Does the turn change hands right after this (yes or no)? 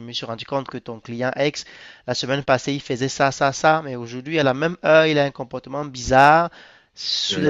no